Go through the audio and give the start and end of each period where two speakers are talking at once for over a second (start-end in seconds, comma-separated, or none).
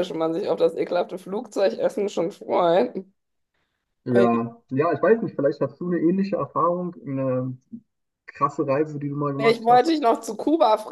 none